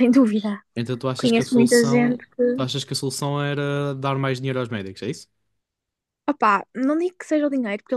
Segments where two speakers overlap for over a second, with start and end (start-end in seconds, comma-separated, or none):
1.2-2.7